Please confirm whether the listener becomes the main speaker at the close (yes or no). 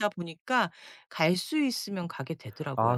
yes